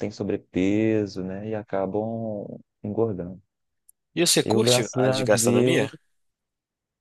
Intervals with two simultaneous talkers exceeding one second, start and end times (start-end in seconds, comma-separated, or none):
4.4-5.9